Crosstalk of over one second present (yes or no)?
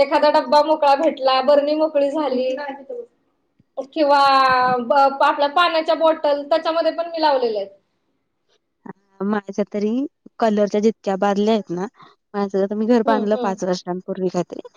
no